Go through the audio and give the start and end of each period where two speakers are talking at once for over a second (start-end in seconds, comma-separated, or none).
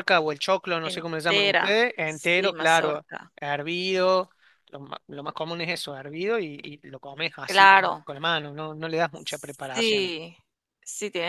0.8-3.3